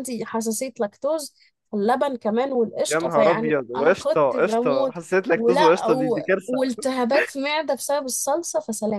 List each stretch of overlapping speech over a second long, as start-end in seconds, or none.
2.9-6.6